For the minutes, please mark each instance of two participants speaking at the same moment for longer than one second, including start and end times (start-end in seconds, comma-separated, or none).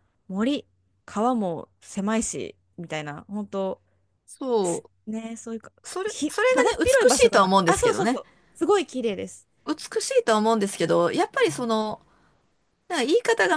5.8-8.2